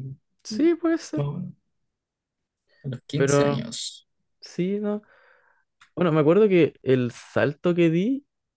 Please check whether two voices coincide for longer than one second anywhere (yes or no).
no